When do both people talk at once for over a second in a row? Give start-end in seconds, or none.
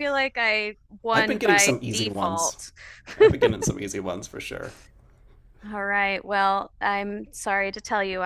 1.1-2.6